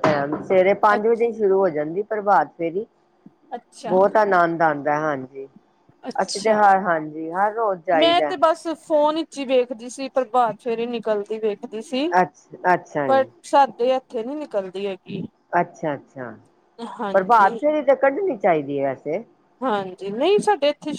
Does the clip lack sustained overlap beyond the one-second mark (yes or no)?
yes